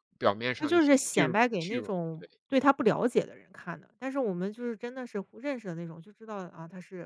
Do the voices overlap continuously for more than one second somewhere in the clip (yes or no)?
yes